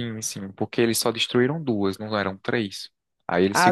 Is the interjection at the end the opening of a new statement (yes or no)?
yes